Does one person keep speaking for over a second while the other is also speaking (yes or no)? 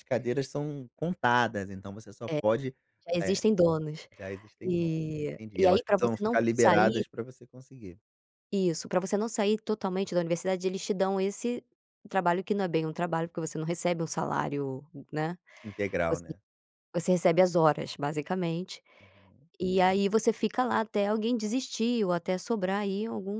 yes